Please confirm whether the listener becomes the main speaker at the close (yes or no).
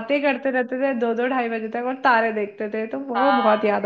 yes